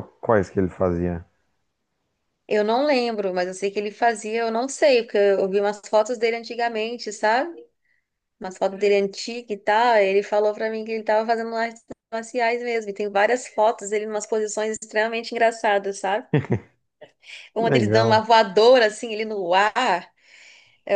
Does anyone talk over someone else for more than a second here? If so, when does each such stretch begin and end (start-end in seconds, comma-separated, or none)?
none